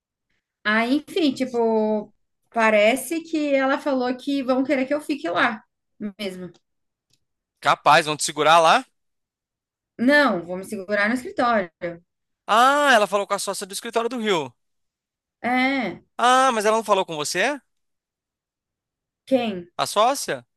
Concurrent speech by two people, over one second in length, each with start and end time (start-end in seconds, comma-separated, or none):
none